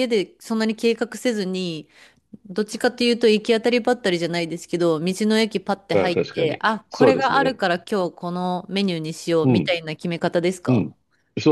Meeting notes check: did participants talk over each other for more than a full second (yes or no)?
yes